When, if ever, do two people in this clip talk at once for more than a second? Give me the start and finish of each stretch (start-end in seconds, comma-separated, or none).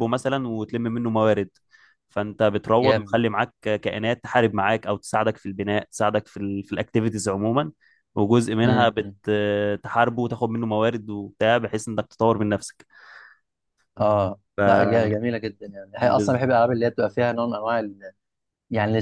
none